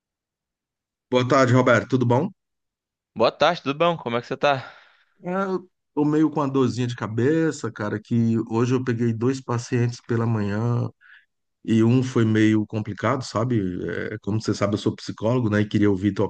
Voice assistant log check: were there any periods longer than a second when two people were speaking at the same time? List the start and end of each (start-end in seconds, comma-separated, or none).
none